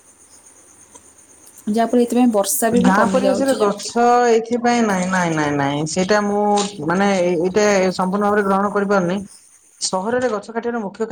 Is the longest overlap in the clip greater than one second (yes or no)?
no